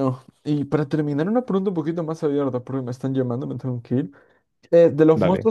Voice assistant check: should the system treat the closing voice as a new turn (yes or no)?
no